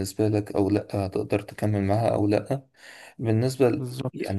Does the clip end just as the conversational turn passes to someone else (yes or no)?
no